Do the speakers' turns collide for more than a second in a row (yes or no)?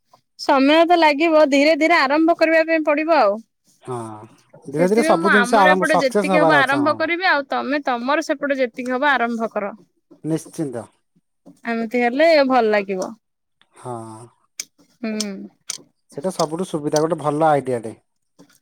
yes